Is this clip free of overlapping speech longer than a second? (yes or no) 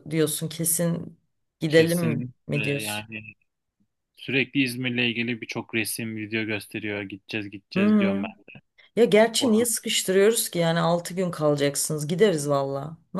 no